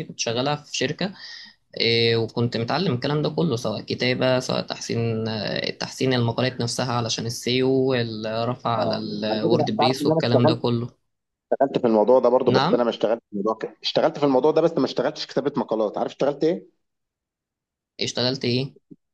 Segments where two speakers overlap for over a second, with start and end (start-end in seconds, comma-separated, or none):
8.7-10.6